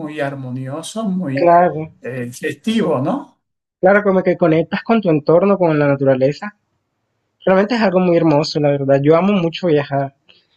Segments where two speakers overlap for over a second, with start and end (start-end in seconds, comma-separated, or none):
none